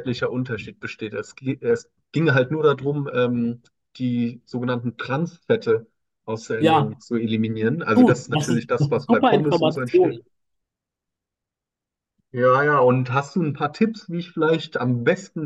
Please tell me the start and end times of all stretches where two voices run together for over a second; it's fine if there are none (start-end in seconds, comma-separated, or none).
8.0-10.2